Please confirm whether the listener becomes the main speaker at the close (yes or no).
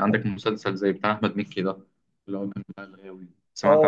yes